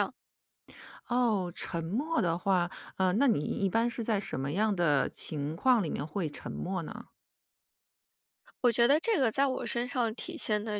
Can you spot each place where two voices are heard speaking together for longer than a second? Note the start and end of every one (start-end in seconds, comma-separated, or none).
none